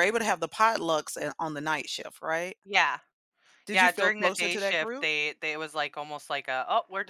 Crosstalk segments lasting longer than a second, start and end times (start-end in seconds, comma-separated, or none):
3.7-5.1